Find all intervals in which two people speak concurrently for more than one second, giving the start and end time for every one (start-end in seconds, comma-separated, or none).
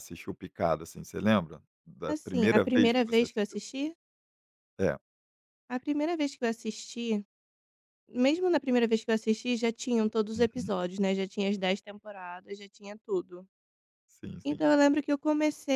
2.1-3.6